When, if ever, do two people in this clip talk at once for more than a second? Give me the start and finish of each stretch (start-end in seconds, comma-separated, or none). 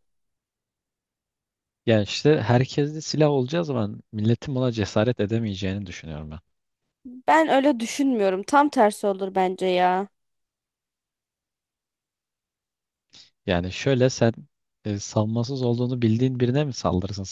none